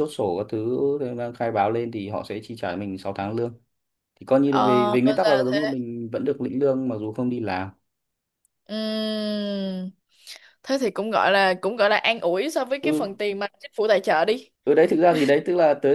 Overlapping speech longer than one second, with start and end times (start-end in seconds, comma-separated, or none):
4.4-5.7